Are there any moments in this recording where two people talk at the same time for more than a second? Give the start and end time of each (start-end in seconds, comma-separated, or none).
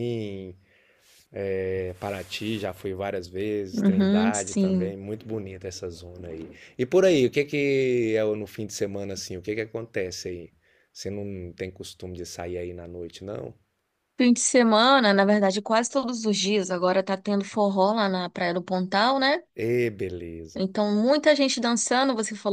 3.7-5.0